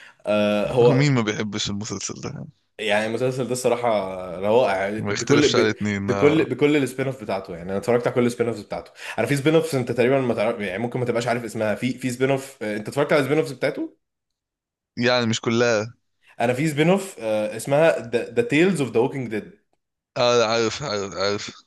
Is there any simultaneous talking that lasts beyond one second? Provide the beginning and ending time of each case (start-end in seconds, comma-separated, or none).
5.0-6.5